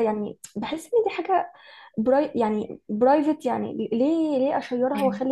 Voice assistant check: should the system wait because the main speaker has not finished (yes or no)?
yes